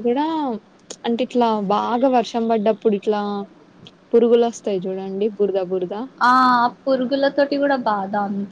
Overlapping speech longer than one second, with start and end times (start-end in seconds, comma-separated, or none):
none